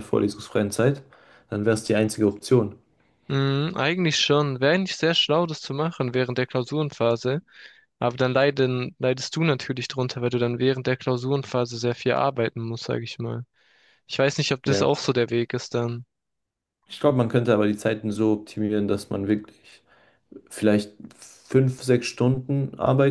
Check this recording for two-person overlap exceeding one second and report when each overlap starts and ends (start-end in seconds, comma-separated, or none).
none